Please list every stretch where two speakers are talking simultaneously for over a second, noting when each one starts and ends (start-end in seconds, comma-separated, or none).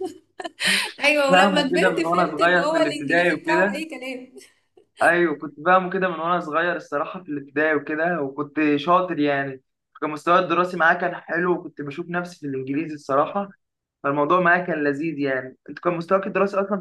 1.3-3.9